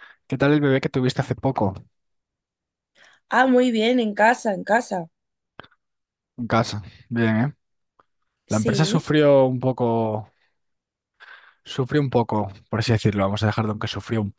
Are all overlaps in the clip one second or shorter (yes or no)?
yes